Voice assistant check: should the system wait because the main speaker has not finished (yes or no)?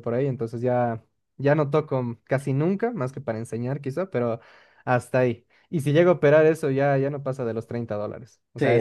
no